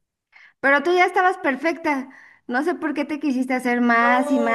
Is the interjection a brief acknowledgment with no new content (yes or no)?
no